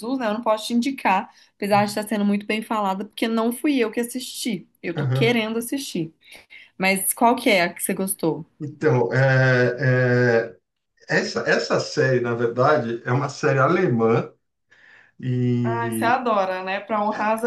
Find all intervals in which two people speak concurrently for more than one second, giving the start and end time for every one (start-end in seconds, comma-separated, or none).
none